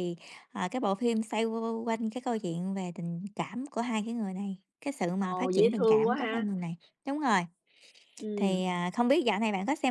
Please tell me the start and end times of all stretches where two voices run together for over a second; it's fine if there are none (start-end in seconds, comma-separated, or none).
5.2-6.5